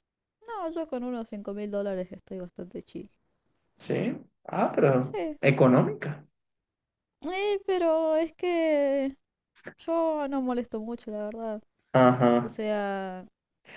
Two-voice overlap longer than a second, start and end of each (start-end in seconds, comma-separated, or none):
none